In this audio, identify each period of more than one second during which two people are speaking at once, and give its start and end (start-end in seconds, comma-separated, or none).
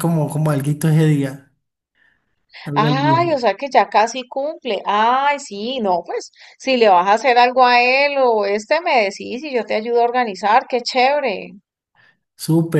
none